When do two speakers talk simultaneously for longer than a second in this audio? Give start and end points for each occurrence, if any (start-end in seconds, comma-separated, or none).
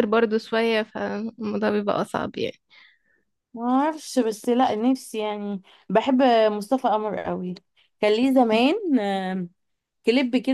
none